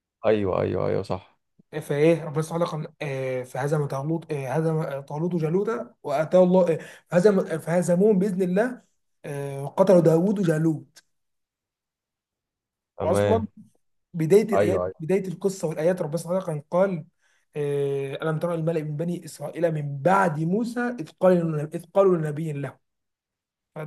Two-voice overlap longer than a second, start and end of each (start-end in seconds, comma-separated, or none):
none